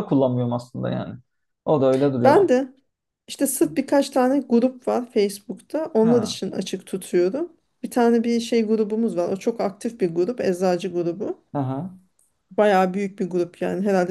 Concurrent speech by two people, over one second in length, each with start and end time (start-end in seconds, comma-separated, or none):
none